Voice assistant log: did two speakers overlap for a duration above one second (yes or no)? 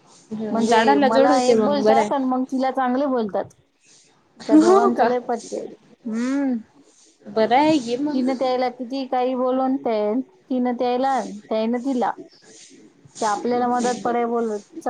yes